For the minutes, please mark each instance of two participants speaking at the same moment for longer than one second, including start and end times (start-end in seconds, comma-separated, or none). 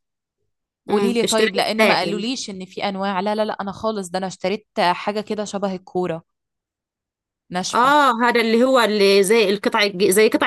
0.9-2.2